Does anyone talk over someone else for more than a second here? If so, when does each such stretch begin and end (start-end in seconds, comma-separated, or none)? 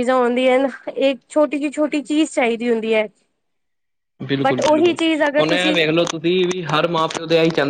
none